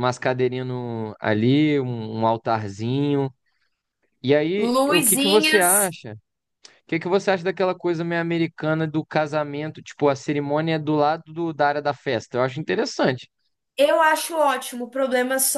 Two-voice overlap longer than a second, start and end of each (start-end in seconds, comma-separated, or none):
4.6-5.9